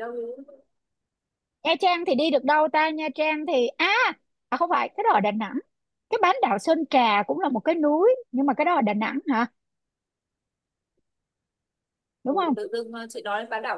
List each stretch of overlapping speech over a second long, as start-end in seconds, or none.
none